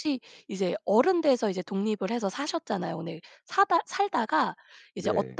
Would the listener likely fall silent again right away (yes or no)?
yes